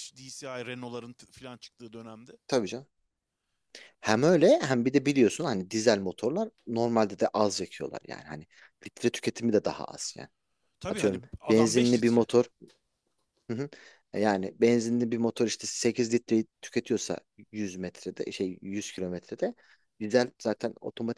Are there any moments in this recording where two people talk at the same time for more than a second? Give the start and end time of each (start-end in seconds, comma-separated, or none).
10.9-12.3